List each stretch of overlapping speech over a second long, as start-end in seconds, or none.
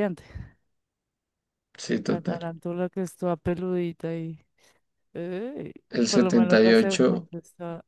6.1-7.3